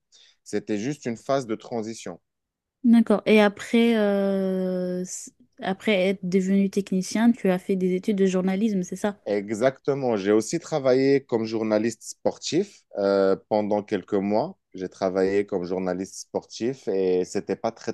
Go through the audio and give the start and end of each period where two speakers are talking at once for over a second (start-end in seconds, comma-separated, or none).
none